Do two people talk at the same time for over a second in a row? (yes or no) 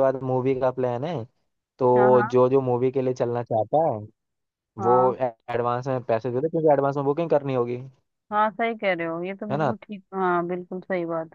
no